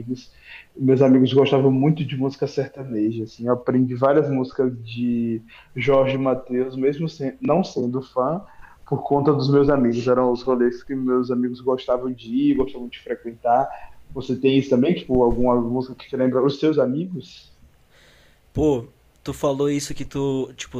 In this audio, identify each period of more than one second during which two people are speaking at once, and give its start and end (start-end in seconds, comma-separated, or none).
none